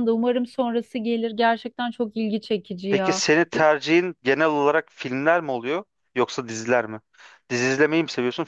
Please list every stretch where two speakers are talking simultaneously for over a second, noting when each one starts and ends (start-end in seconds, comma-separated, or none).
none